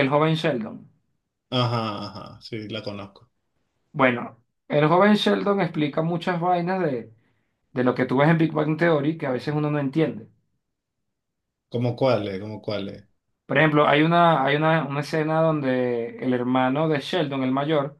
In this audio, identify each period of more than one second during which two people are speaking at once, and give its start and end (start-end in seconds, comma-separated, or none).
none